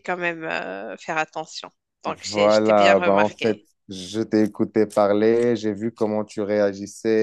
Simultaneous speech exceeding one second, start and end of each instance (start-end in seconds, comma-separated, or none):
2.3-3.6